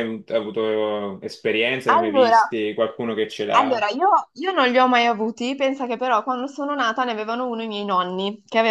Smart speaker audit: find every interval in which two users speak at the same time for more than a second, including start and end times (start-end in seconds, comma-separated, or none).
none